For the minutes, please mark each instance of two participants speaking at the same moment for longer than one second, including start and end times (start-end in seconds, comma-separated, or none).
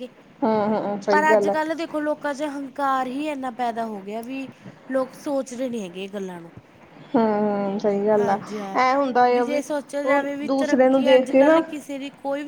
10.1-11.6